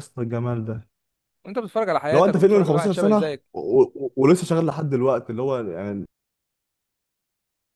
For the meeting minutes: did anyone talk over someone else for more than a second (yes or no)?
yes